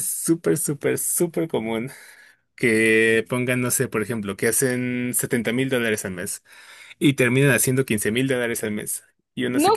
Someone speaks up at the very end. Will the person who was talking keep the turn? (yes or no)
no